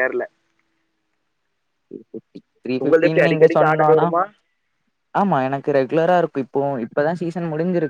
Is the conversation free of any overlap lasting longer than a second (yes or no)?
no